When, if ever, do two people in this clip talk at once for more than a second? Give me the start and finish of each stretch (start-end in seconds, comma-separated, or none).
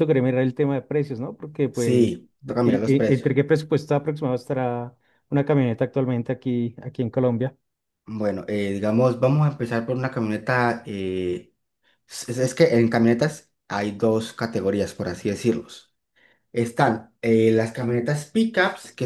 1.7-3.4